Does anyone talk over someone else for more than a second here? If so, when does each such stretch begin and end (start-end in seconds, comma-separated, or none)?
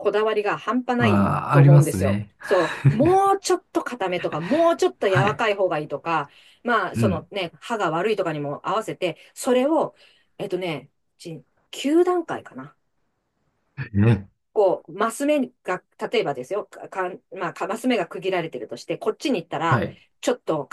1.0-2.3